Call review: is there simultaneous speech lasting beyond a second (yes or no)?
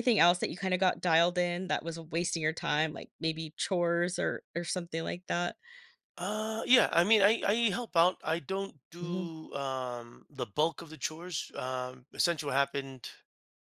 no